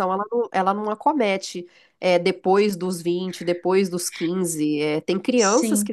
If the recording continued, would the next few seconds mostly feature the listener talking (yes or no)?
no